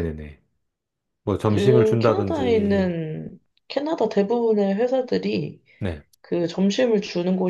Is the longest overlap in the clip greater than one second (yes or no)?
yes